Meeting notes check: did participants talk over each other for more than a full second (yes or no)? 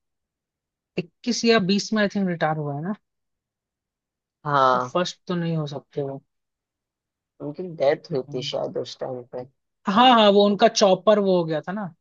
no